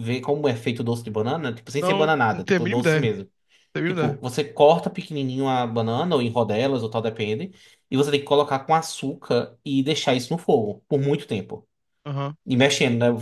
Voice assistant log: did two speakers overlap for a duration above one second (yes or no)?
yes